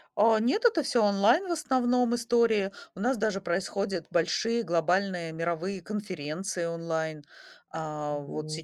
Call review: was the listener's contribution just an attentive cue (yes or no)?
yes